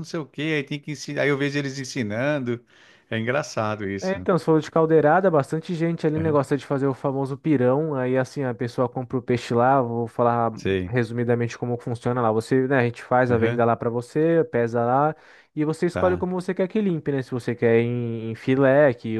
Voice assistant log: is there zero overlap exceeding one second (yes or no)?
yes